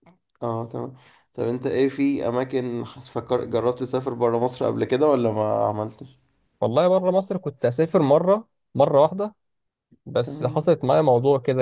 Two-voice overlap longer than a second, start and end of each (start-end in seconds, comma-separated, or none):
none